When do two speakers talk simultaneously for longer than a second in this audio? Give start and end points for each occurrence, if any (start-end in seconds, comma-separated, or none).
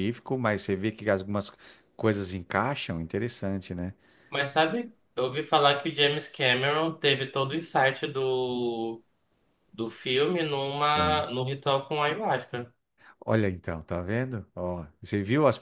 none